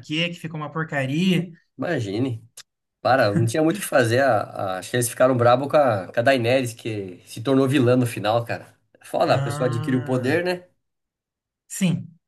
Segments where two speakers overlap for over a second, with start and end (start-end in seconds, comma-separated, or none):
9.2-10.5